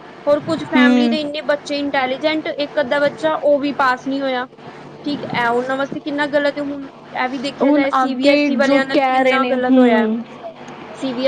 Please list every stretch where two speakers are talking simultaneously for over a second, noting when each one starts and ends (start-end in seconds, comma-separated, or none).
7.6-10.1